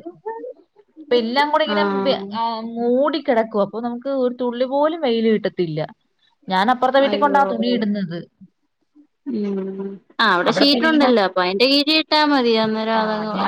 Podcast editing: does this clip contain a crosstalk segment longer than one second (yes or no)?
no